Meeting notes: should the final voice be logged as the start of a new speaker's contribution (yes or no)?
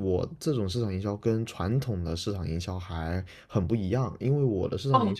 no